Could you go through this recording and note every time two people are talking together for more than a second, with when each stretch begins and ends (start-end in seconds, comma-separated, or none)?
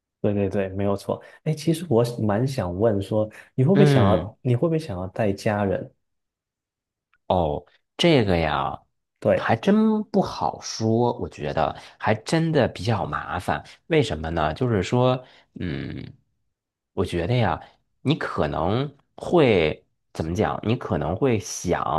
none